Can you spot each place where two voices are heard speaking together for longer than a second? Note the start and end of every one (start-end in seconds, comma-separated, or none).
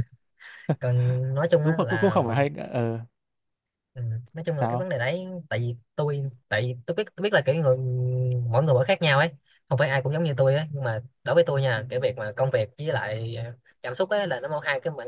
none